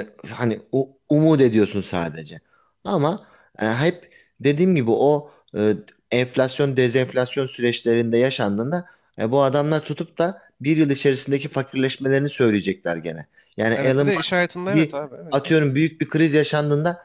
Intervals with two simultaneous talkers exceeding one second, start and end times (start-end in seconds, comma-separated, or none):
13.7-15.8